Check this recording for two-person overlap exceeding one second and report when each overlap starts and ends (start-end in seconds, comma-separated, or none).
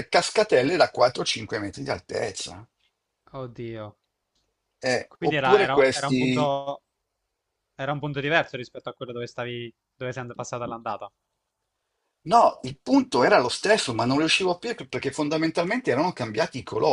5.1-6.5